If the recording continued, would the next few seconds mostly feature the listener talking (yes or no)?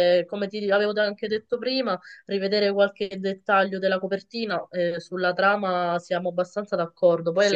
yes